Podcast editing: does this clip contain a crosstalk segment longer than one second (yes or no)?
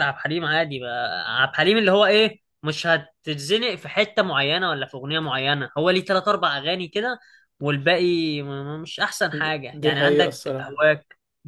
yes